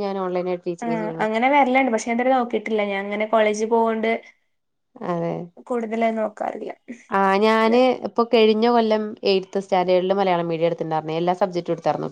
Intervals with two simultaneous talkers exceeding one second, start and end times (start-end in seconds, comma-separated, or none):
none